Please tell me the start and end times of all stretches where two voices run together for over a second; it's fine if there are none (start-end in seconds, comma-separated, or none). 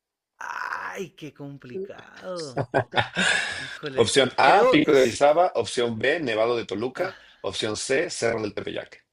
4.0-5.2